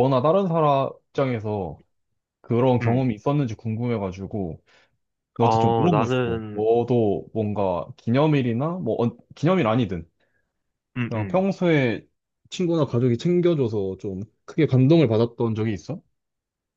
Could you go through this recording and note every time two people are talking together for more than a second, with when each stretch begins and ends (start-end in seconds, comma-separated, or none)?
5.4-6.7